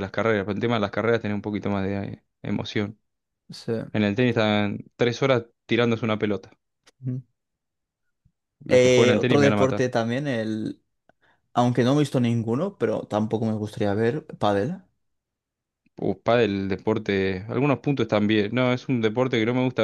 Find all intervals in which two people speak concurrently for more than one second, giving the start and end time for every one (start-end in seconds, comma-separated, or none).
8.7-9.9